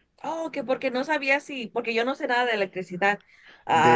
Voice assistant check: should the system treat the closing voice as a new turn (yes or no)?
yes